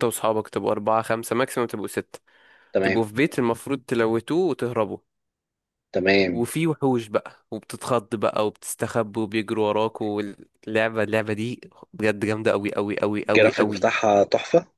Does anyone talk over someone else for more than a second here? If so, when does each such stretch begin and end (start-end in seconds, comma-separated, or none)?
none